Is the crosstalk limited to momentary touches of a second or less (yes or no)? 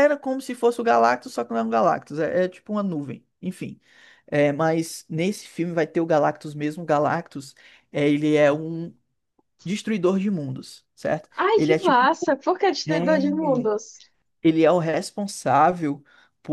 yes